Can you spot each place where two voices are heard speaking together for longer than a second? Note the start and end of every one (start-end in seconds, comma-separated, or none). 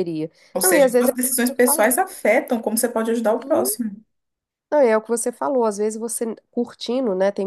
0.5-1.9